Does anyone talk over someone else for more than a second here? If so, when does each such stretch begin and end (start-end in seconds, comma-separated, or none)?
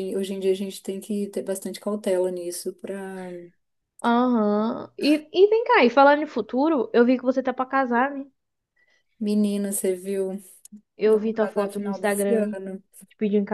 11.0-12.6